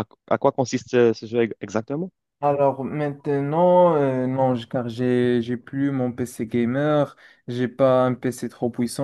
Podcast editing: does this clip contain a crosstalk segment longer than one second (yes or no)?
no